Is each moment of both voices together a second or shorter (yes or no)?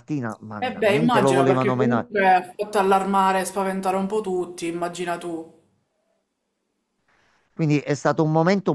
no